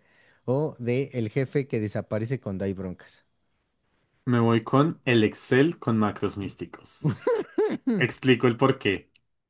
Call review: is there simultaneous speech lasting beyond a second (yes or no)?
no